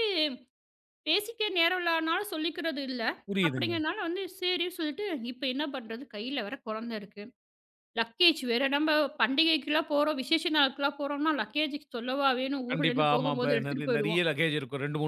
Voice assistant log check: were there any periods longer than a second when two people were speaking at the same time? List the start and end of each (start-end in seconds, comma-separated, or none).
12.7-14.2